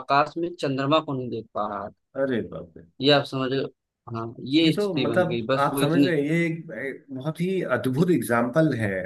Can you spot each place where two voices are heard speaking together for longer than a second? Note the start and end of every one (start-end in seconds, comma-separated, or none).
4.6-6.2